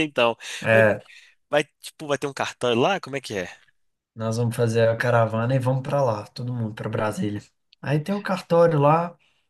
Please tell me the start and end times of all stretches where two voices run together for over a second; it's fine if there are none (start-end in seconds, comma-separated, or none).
none